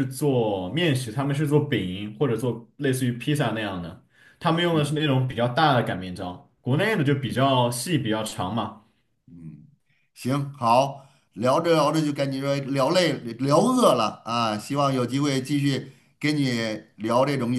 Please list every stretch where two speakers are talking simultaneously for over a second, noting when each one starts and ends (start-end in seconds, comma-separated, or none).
none